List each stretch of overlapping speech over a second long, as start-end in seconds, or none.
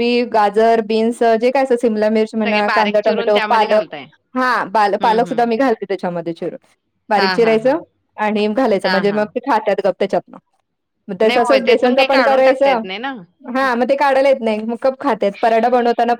2.4-3.9, 11.2-12.8